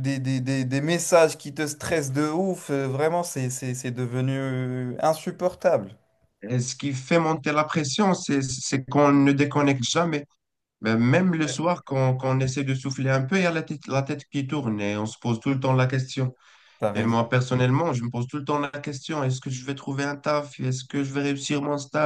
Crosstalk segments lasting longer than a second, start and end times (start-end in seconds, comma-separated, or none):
none